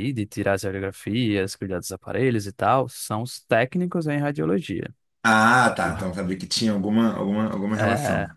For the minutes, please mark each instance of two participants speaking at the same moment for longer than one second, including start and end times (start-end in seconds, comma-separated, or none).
none